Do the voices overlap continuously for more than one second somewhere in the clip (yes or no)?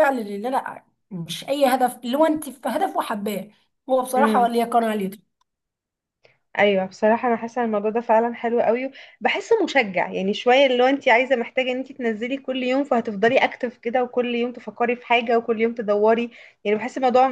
no